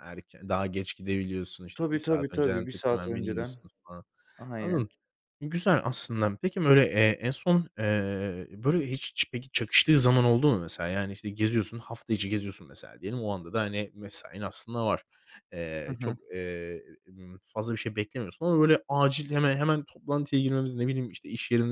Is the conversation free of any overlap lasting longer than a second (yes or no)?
no